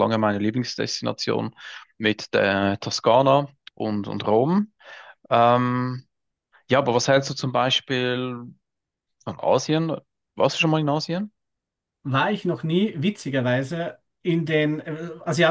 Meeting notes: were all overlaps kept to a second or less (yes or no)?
yes